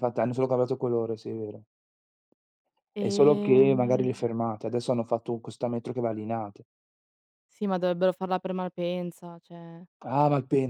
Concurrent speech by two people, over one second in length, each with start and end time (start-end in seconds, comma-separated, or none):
3.0-4.3